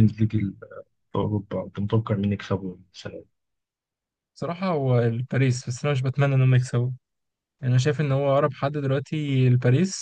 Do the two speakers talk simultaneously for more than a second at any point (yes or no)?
no